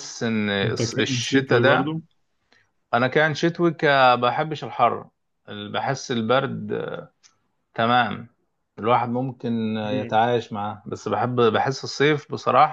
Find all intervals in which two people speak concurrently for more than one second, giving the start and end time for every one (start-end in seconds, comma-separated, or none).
0.6-1.9